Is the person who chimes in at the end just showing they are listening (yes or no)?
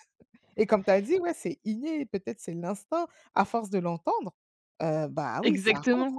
no